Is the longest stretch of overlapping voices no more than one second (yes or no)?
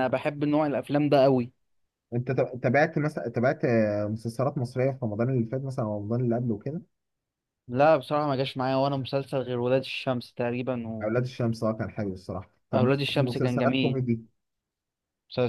no